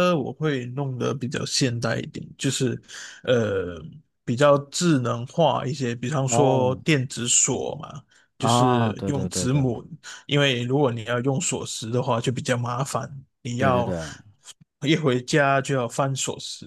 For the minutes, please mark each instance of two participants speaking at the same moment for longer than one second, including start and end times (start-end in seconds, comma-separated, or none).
8.4-9.7